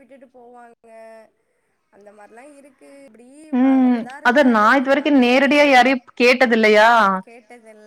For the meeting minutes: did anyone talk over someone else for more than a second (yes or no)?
yes